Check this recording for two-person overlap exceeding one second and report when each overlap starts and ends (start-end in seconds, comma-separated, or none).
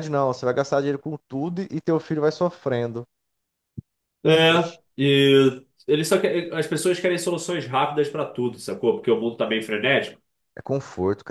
none